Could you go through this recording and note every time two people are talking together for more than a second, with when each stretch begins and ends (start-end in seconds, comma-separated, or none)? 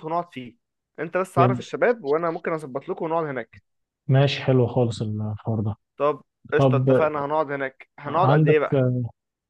none